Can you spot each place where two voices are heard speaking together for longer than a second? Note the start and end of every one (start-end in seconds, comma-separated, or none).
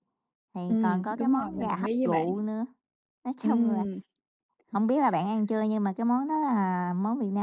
0.7-2.3